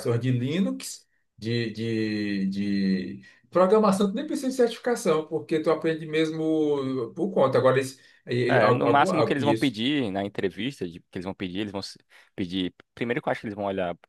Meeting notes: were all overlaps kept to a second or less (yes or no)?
no